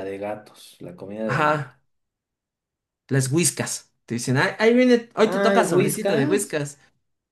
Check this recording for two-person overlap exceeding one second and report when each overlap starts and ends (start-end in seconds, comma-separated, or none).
5.3-6.6